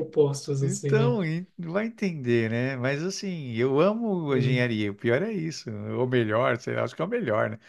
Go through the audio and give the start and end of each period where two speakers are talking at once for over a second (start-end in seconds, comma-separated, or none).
none